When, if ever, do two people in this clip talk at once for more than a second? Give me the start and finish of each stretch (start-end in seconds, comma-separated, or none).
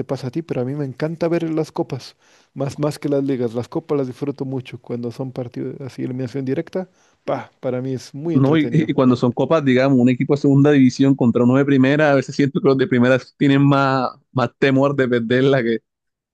none